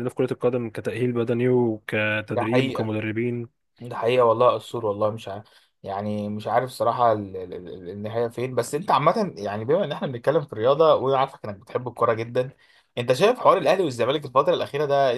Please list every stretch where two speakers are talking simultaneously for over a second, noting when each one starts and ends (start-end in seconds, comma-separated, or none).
none